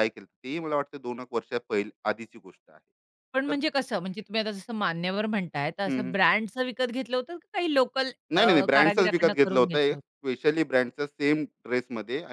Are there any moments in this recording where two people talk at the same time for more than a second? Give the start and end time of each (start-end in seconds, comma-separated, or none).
8.7-10.0